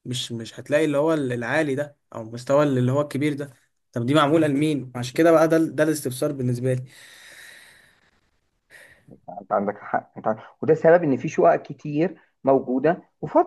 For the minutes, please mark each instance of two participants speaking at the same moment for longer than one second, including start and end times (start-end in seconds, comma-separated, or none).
none